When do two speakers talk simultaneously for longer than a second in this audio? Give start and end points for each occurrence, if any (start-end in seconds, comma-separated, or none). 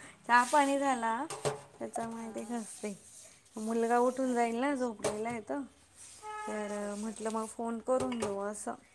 3.7-5.0